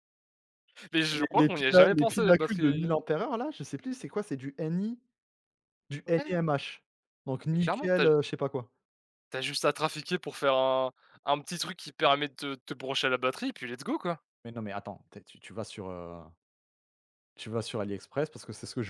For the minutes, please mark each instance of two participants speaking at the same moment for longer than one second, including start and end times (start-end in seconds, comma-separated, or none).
1.0-2.9